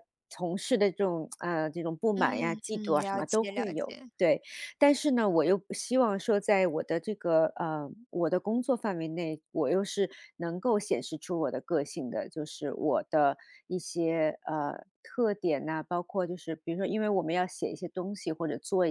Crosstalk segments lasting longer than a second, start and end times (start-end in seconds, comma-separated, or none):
2.1-4.1